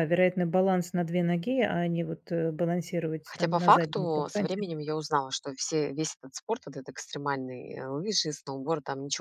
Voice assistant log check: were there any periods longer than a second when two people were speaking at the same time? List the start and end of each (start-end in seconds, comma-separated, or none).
3.2-4.6